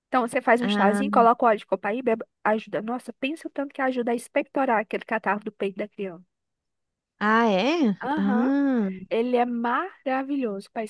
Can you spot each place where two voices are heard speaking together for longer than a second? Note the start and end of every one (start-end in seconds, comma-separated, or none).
none